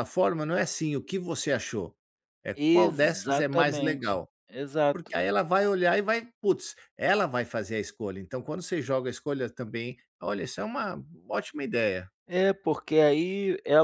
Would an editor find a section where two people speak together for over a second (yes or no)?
yes